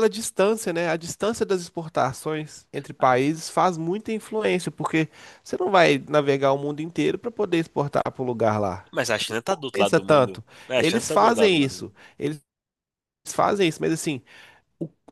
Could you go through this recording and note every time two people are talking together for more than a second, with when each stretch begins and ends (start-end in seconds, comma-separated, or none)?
9.3-11.9